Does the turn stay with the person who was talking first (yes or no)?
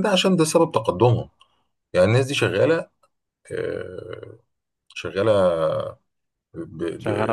yes